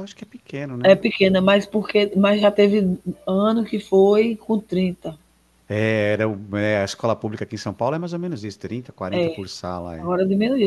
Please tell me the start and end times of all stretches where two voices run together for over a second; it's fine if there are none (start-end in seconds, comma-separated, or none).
none